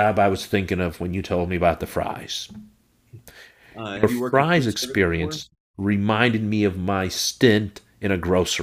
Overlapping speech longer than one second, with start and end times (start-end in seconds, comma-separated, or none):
4.0-5.4